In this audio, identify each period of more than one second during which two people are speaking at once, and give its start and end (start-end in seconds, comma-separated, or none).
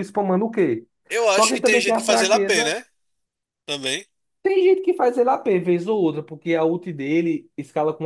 1.3-2.7